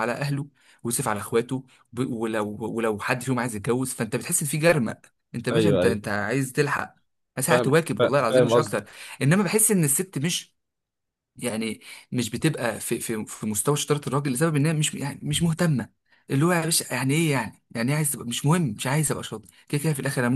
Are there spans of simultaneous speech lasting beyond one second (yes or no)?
yes